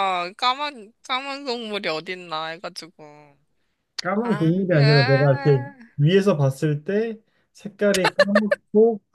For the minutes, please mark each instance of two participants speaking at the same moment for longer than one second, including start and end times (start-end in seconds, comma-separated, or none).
4.2-5.8